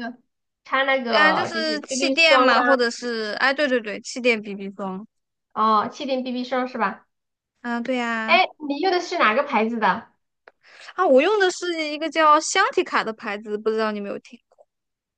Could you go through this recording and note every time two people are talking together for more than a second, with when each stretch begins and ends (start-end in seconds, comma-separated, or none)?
1.1-2.7